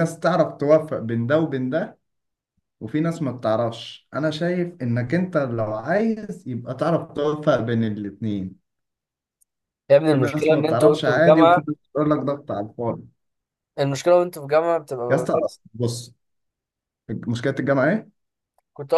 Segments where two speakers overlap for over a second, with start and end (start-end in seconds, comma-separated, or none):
10.1-11.6